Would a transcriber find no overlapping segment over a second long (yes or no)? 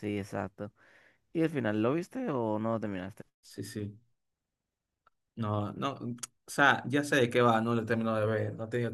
yes